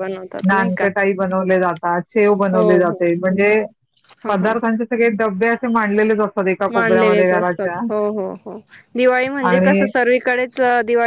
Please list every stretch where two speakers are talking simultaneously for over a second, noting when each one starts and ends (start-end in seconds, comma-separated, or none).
none